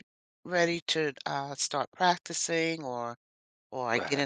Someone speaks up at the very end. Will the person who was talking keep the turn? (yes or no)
yes